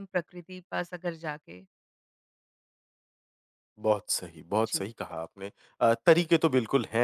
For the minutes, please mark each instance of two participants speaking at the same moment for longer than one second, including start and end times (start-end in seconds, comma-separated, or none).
none